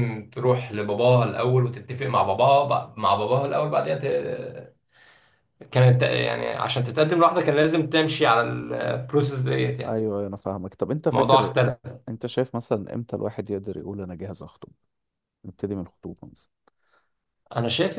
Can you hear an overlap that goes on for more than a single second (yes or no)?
no